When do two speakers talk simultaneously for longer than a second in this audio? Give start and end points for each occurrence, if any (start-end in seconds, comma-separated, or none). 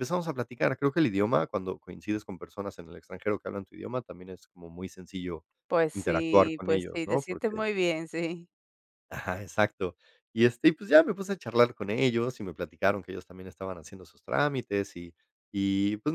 5.9-7.6